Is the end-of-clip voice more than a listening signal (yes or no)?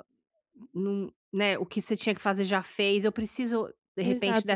yes